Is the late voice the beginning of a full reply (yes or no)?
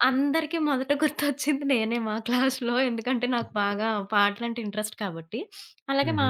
no